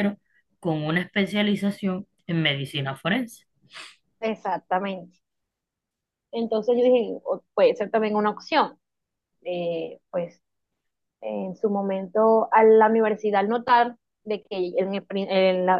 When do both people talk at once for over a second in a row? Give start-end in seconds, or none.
none